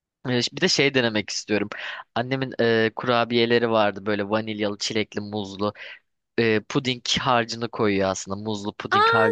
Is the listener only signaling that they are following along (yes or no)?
no